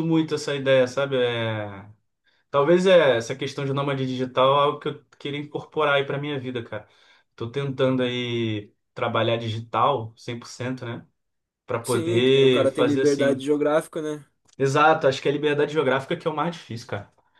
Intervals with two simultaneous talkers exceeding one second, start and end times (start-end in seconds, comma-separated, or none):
11.8-13.4